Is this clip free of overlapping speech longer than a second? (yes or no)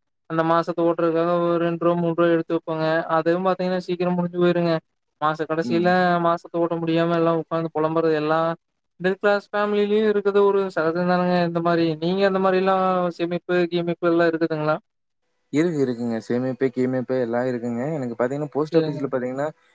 yes